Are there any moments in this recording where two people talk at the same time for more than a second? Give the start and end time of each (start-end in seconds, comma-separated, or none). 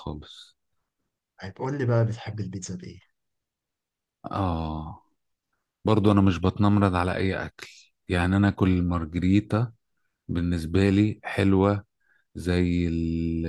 none